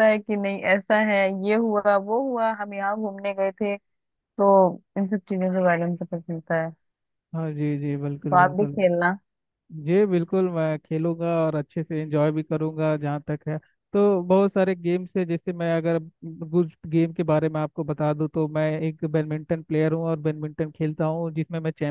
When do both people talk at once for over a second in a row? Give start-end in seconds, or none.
none